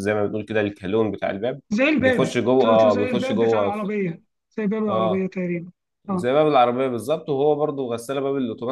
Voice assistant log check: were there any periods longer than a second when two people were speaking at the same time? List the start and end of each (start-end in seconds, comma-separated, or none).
2.0-3.8